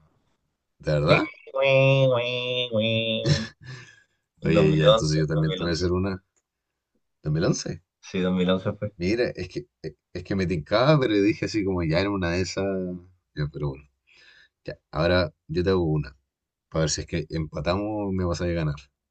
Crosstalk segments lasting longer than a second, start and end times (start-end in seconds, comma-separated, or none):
4.4-5.9